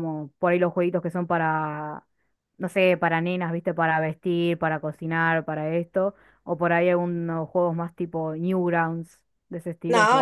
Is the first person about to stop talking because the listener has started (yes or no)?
yes